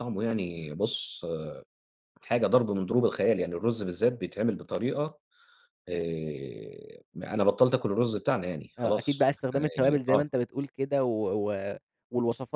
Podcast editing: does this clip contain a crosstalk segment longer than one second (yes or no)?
yes